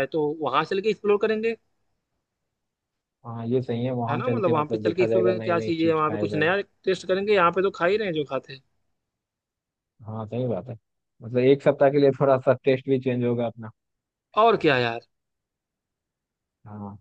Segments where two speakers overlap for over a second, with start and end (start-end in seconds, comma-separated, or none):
4.1-6.5